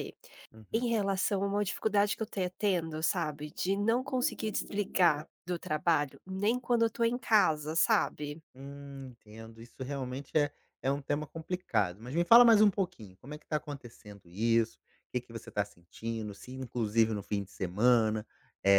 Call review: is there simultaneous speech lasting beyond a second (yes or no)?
no